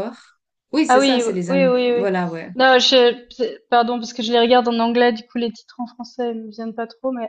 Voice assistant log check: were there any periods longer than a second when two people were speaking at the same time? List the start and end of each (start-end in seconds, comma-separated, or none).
0.9-2.2